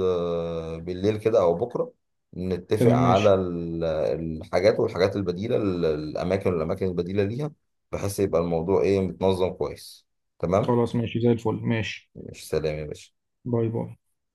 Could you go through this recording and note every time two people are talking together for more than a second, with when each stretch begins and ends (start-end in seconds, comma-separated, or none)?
none